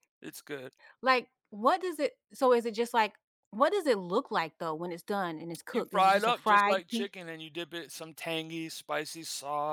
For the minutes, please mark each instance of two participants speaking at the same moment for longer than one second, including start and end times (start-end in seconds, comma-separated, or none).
5.7-7.1